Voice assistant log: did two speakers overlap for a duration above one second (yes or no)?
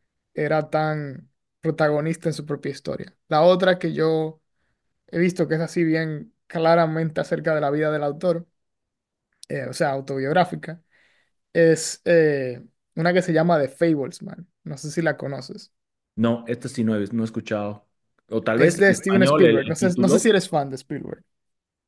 yes